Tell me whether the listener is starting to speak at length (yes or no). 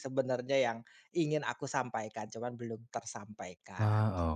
yes